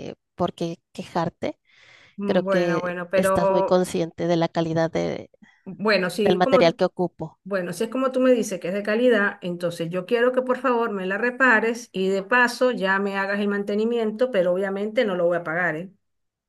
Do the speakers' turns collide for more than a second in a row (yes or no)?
yes